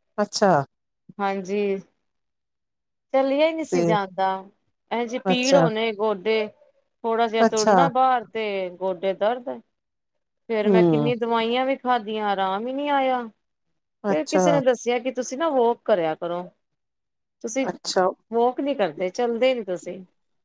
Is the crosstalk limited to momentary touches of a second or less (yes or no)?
yes